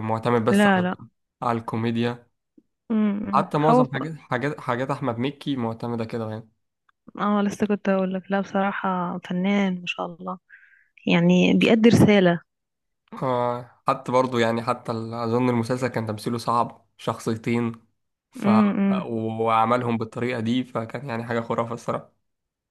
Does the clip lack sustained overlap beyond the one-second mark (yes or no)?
yes